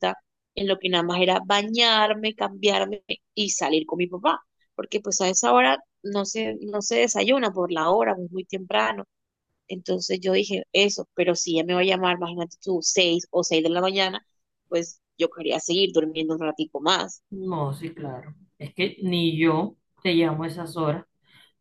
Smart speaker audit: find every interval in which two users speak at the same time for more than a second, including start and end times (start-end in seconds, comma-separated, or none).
none